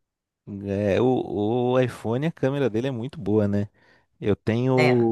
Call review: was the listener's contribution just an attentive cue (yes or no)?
yes